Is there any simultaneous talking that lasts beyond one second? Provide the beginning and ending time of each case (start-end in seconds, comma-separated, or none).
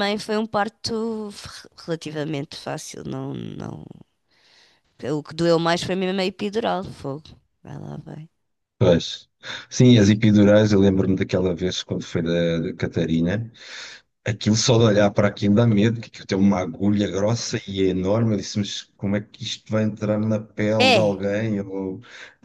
none